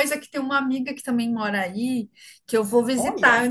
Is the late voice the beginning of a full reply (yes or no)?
no